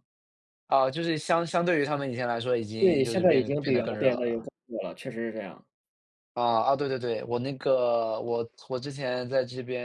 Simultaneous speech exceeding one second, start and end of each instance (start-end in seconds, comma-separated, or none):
2.8-4.5